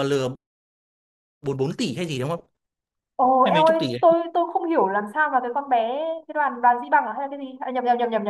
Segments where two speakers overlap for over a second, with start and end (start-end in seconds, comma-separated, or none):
none